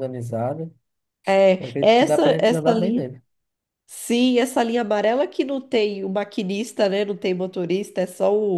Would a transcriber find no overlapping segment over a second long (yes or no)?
no